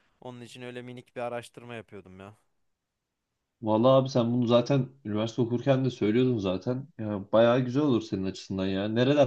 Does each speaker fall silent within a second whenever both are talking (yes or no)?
yes